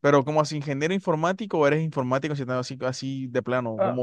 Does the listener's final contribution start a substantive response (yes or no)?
yes